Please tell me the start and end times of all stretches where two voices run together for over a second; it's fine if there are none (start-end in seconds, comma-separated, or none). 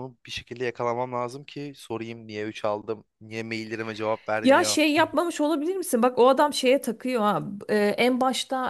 none